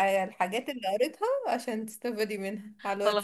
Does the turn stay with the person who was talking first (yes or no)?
no